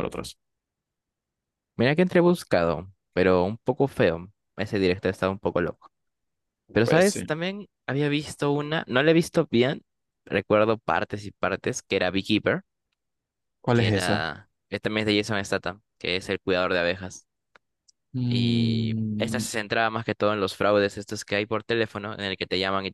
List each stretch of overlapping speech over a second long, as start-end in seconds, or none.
18.3-19.5